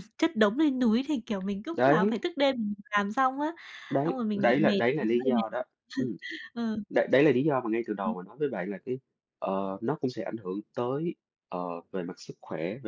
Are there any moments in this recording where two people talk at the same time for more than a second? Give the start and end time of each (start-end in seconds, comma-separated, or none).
4.0-5.7